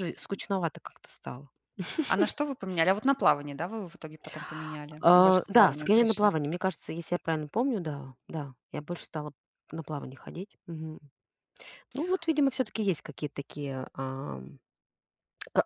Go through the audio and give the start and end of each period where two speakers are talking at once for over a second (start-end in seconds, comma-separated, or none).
5.0-6.3